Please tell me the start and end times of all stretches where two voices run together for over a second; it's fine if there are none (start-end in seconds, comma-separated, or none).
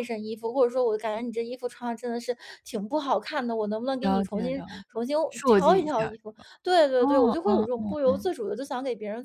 4.0-6.1, 7.0-8.3